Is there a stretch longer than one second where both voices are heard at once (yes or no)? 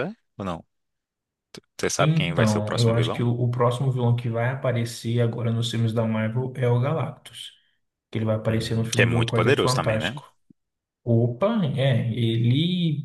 yes